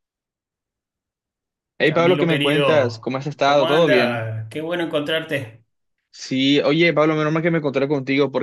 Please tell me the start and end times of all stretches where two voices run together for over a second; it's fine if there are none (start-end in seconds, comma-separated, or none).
1.8-4.3